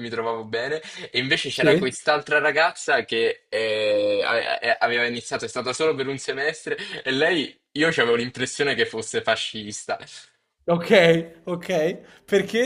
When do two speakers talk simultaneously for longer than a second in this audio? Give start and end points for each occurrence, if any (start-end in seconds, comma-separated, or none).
none